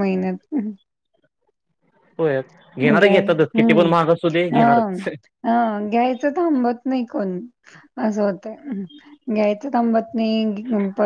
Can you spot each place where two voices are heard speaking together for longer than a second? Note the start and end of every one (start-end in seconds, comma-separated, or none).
3.0-5.0